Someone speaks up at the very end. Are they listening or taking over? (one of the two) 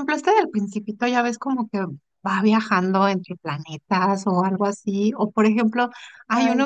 listening